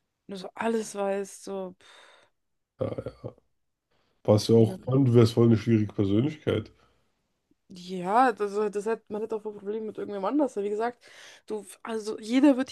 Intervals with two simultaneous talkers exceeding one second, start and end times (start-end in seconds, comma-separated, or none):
none